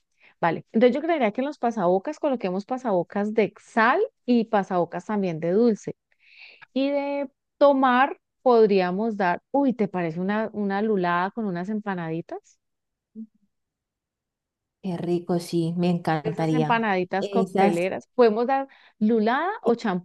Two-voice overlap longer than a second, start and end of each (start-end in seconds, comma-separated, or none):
16.2-17.9